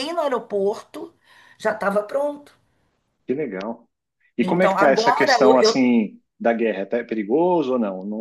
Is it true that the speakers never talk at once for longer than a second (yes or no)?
no